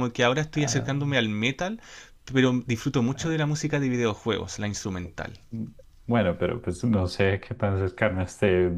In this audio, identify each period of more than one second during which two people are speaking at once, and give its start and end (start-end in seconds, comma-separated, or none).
none